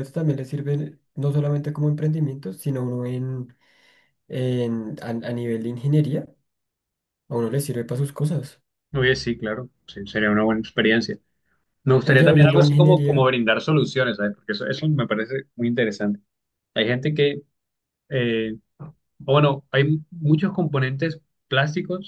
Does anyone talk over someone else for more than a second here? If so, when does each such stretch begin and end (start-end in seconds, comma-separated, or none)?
12.1-13.3